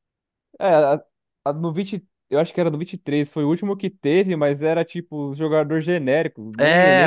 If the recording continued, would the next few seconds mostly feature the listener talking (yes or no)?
yes